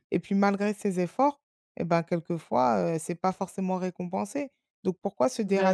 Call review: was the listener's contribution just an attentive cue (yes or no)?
yes